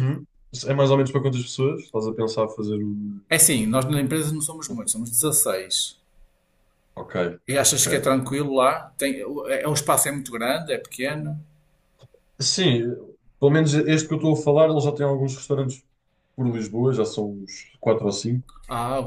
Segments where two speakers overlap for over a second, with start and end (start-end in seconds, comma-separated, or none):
none